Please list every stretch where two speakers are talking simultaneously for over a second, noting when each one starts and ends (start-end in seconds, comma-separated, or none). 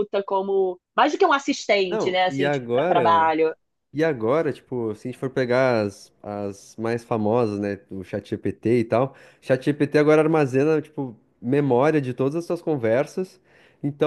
1.9-3.3